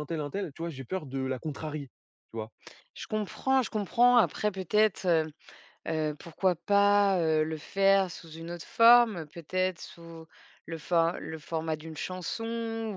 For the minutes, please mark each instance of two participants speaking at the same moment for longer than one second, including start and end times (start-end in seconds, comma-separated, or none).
none